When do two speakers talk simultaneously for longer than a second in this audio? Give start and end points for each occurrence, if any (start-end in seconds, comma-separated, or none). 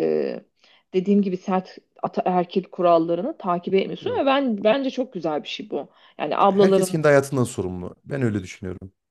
none